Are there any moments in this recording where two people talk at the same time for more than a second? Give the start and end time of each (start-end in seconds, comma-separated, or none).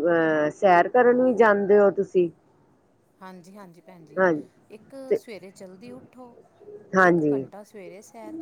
none